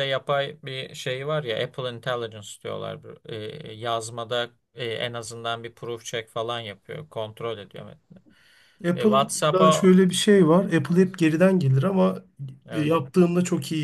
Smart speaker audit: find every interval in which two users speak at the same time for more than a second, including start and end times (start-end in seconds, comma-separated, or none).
8.9-10.6